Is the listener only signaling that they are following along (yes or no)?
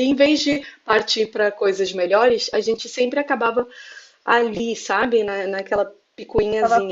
no